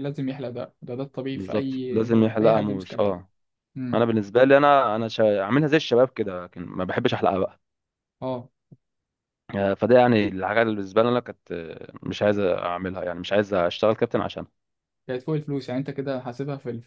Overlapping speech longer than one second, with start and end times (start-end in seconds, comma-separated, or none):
1.3-3.1